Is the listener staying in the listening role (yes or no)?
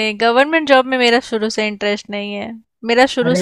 yes